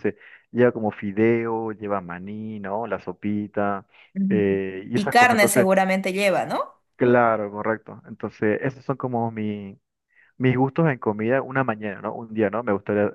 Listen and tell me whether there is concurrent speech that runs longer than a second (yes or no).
yes